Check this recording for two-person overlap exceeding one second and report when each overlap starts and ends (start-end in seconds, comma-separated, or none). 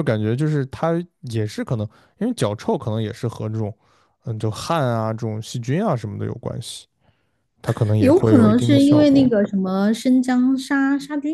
8.0-9.3